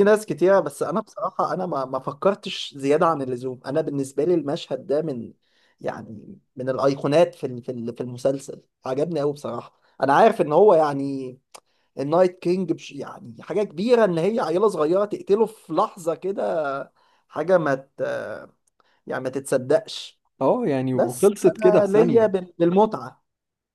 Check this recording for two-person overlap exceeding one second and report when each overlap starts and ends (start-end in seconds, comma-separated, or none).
20.9-22.3